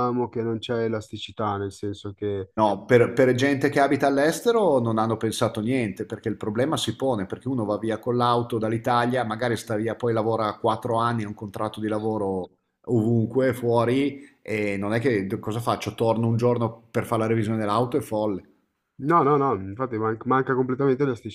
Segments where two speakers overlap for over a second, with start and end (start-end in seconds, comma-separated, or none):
none